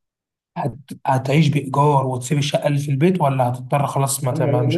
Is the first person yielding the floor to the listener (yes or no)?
yes